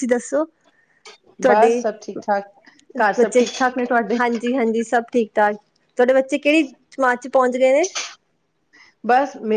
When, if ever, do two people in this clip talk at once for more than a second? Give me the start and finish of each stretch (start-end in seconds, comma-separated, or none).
none